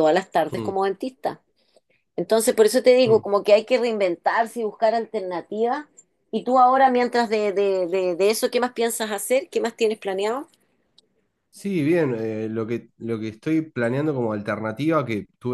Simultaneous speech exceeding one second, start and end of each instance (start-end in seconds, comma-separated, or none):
none